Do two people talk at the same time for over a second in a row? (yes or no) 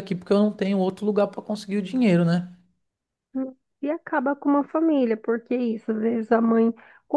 no